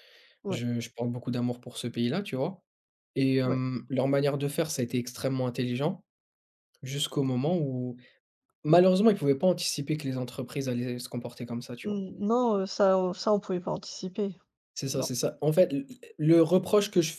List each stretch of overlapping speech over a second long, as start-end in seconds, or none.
none